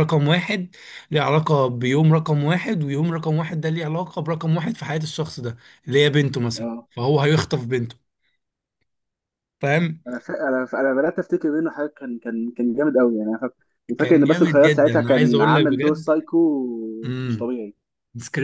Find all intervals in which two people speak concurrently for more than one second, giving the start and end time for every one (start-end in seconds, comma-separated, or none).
14.0-16.1